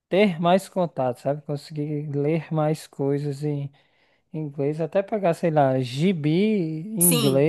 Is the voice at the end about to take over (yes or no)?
no